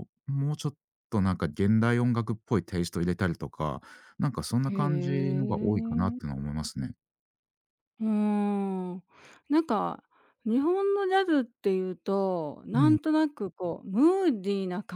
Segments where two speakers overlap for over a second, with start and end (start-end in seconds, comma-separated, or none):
4.7-6.2